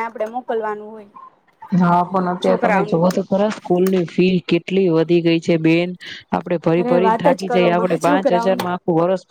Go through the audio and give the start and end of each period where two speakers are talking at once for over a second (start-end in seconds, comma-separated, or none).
6.8-8.7